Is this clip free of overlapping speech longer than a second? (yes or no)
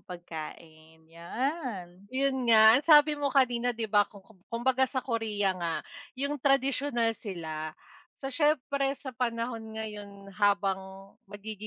yes